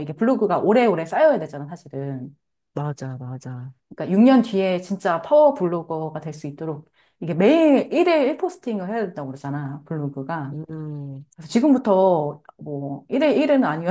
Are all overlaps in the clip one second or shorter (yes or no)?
yes